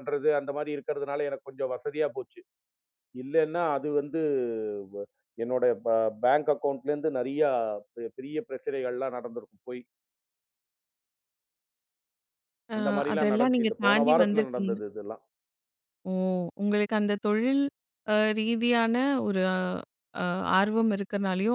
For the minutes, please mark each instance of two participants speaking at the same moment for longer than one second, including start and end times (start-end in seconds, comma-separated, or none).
13.1-14.8